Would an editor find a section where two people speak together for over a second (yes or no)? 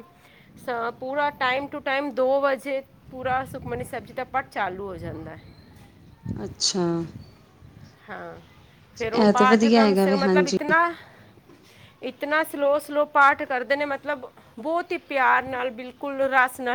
yes